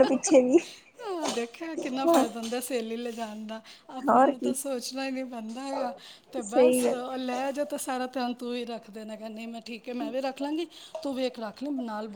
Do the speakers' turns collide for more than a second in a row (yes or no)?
no